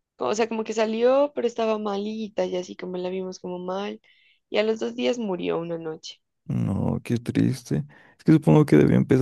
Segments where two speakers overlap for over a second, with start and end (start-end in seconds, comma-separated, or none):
none